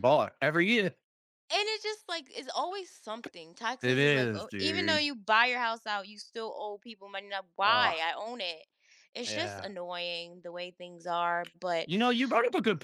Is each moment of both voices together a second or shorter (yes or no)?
no